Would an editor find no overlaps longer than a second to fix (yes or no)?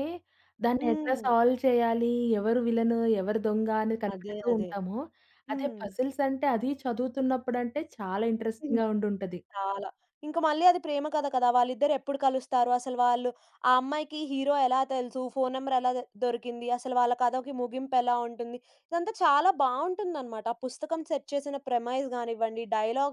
yes